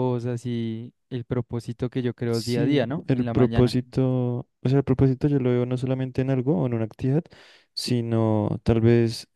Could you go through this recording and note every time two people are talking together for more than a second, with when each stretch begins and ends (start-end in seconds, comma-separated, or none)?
2.3-3.7